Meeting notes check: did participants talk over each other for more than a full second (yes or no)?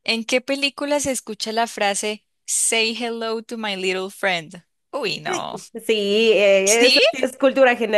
no